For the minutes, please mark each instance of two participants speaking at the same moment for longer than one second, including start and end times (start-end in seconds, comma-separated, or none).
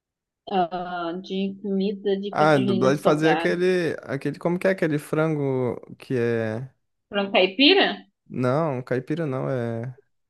2.3-3.6